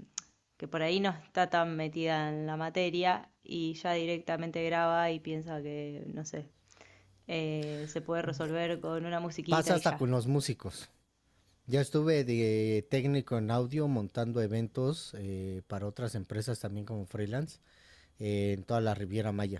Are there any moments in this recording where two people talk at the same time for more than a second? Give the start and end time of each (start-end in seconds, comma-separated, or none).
none